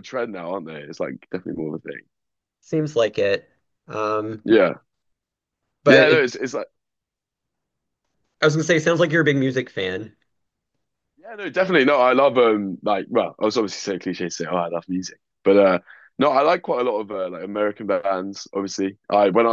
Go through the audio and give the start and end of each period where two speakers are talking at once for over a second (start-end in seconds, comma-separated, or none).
none